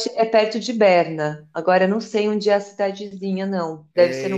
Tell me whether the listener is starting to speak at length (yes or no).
yes